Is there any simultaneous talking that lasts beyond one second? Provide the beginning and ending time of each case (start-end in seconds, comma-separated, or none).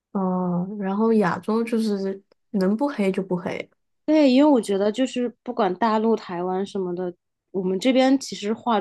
none